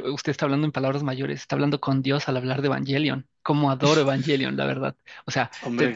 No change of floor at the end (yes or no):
yes